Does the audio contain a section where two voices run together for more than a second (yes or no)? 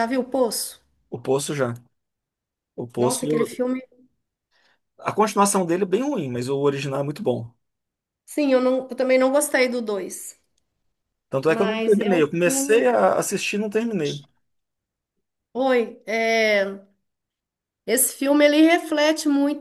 yes